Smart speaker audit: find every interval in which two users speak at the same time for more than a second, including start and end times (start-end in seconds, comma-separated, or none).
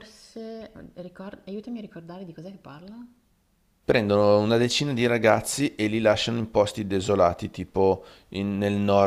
none